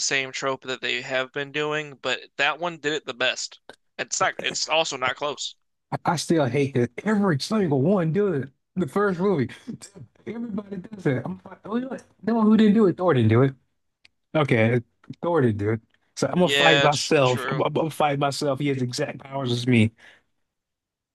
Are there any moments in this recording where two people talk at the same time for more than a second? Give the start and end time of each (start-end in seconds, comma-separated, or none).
16.4-17.6